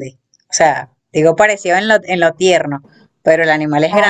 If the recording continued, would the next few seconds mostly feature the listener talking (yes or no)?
no